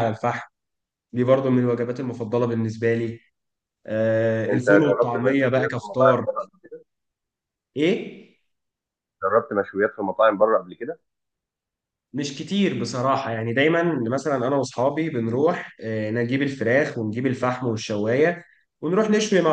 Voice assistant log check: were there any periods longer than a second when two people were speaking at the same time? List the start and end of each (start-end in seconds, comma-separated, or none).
4.5-6.3